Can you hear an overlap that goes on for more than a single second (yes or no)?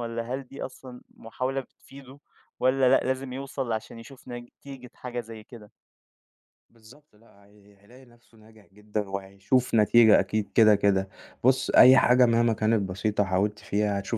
no